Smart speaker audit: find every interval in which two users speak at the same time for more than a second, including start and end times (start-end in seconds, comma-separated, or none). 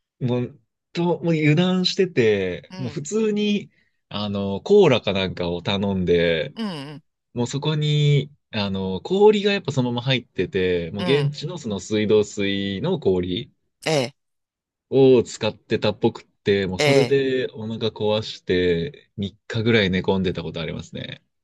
none